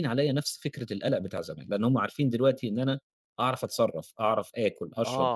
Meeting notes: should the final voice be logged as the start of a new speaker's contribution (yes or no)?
yes